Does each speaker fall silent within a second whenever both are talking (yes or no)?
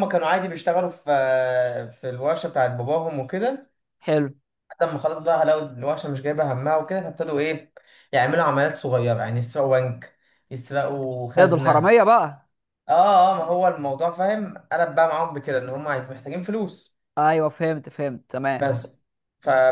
yes